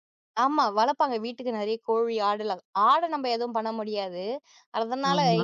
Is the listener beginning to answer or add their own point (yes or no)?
no